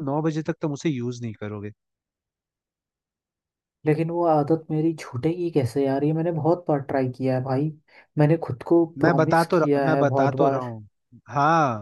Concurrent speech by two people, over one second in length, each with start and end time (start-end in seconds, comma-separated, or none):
9.0-10.7